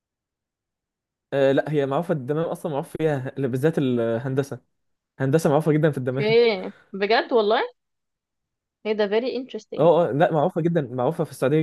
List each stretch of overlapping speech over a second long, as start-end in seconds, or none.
none